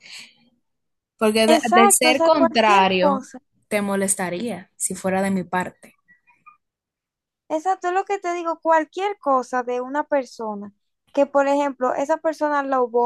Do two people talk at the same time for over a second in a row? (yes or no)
yes